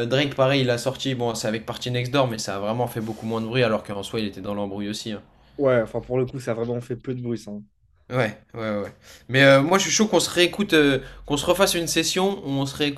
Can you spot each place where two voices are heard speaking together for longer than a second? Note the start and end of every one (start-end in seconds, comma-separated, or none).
none